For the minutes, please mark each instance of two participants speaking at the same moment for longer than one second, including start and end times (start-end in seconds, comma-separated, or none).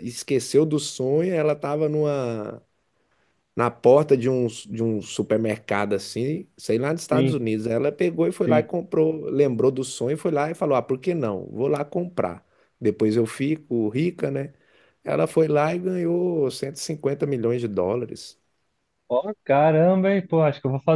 none